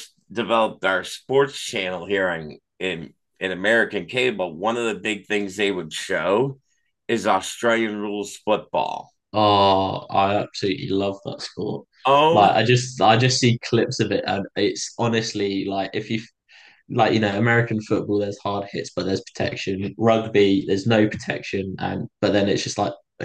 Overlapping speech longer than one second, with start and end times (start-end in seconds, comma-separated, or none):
none